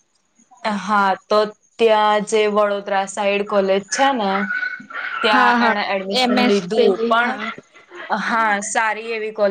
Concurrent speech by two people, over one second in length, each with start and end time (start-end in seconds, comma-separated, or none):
5.3-7.4